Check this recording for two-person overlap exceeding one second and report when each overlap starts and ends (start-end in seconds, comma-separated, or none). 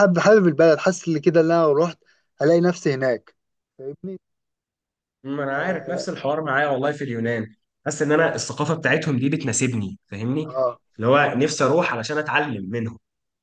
none